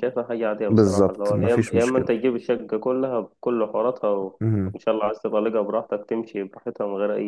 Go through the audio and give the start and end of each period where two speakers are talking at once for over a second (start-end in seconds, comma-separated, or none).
0.7-2.1